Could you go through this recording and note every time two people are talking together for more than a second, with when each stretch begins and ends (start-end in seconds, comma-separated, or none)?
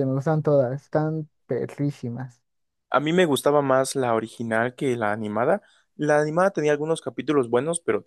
none